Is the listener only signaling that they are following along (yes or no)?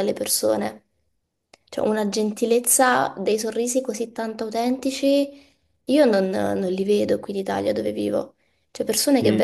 yes